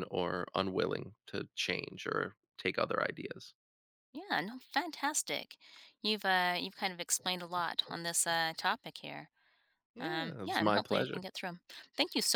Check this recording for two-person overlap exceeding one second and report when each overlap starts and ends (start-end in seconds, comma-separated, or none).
10.0-11.2